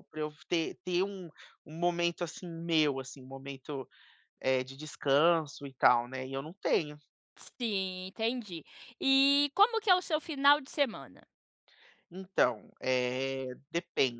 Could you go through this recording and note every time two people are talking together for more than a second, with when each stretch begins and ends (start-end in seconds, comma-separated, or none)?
none